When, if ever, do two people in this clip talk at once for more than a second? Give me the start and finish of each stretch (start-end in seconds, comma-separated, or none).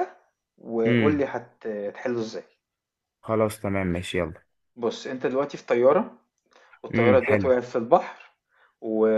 none